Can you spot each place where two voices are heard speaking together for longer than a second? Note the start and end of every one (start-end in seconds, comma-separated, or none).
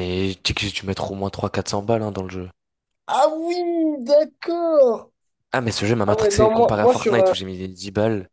6.1-7.3